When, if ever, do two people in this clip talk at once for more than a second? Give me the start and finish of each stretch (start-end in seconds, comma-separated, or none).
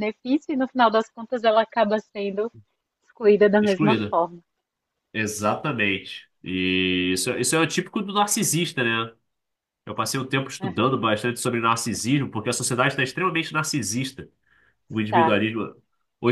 none